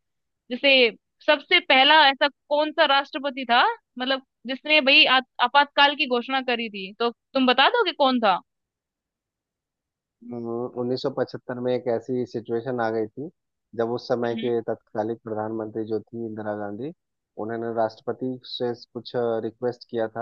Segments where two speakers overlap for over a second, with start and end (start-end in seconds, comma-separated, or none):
none